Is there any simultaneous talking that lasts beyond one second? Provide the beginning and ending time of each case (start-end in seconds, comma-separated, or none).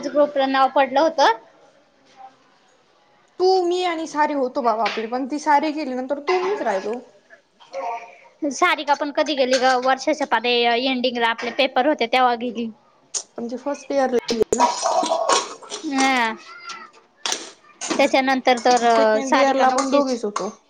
18.9-20.2